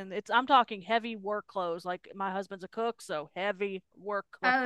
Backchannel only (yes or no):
no